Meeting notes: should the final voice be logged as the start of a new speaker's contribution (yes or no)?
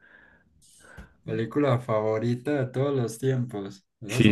no